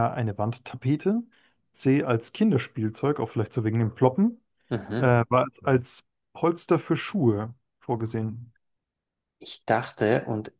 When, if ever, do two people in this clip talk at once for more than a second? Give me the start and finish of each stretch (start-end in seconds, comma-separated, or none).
none